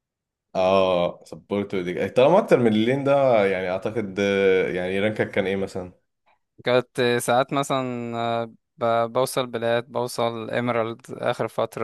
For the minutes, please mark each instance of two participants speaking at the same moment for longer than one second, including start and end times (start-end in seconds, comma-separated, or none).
none